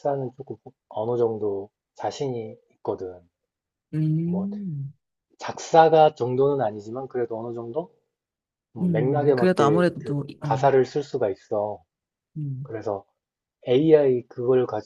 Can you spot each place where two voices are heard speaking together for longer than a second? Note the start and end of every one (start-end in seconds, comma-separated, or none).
8.8-10.7